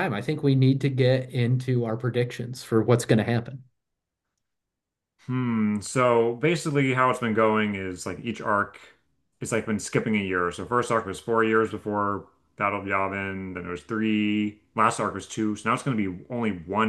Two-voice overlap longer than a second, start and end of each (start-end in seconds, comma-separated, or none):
none